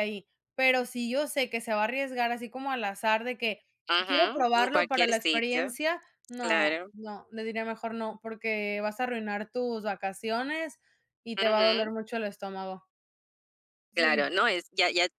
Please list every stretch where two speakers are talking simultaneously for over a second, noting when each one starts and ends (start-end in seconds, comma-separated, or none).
4.0-5.8